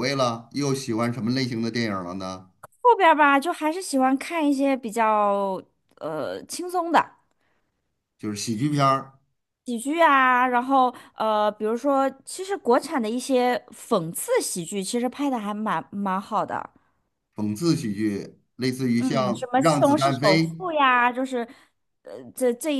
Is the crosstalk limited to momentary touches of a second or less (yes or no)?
no